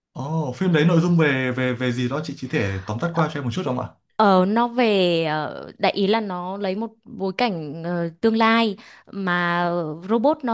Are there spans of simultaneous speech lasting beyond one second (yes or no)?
no